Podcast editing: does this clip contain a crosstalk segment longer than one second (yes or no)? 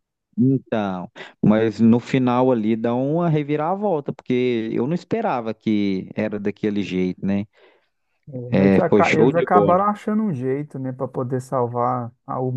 yes